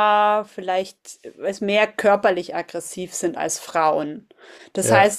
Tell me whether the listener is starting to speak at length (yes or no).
no